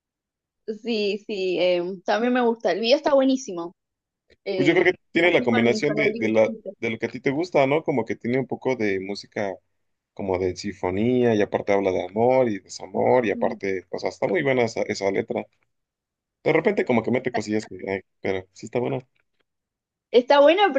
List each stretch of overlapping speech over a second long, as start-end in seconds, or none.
4.5-6.7